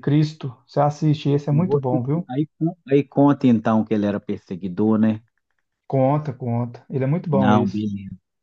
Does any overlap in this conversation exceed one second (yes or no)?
no